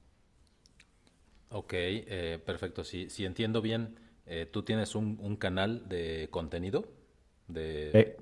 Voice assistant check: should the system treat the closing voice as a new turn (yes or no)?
no